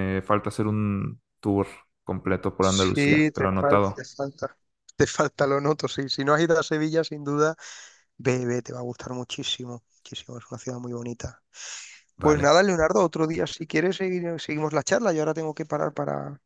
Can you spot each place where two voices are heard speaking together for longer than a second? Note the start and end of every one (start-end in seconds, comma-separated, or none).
2.6-4.0